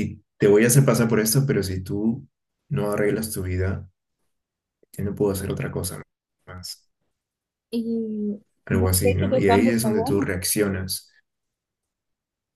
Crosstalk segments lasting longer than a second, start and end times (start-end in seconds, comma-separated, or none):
8.7-10.3